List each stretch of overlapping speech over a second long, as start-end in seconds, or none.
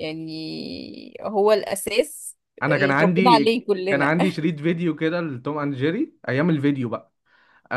2.6-4.1